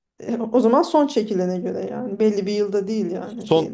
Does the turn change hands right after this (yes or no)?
yes